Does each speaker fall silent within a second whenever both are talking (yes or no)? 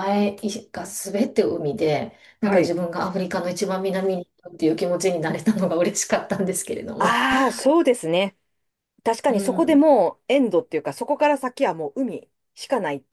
yes